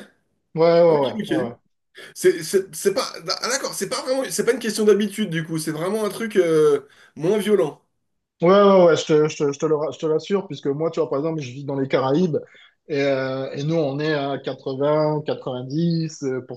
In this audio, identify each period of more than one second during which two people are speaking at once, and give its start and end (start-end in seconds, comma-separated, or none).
none